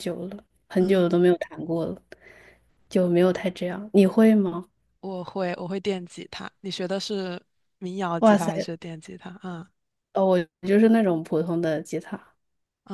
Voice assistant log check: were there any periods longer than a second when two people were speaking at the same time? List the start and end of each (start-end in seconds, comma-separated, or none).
none